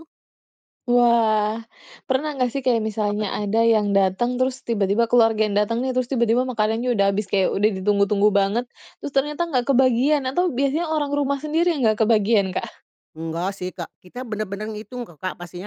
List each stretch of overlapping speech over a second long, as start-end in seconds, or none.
none